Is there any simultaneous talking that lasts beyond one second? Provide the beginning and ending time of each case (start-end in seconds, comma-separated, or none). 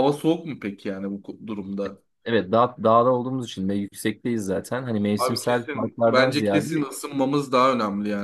5.2-6.8